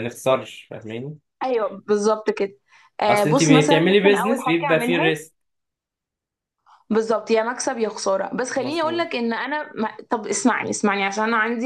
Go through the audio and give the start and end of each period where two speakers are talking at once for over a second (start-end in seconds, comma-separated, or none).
3.1-5.1